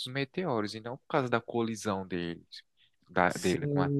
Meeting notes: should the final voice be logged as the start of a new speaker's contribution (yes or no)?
yes